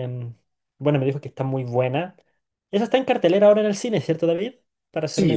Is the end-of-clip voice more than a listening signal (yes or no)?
yes